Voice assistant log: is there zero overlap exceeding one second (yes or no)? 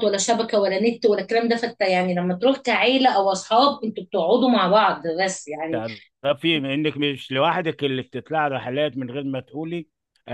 yes